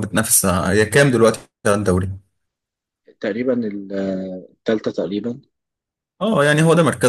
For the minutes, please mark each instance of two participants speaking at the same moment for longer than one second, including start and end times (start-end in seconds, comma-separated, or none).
none